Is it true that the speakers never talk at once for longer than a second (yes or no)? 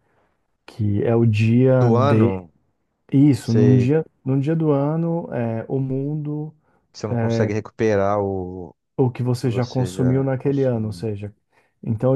no